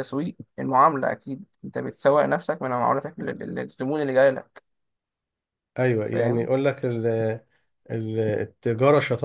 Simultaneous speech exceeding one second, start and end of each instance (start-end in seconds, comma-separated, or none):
none